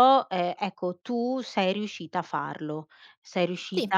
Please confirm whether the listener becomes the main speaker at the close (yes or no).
no